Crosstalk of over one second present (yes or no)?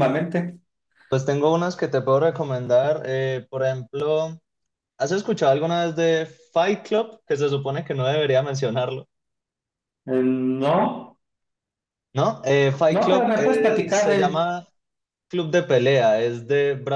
yes